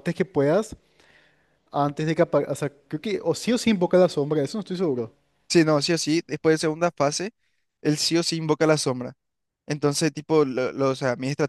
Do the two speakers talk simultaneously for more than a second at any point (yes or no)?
no